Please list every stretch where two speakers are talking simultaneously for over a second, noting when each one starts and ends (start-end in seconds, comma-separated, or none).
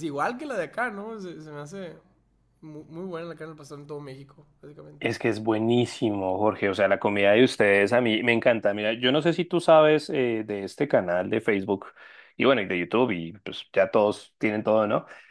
none